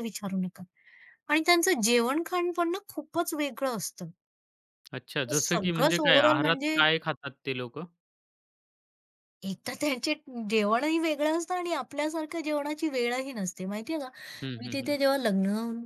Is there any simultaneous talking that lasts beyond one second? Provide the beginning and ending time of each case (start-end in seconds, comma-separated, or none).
5.4-6.8